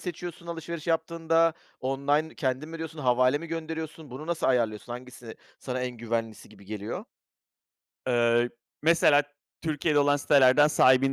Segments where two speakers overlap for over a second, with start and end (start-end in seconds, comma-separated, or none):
none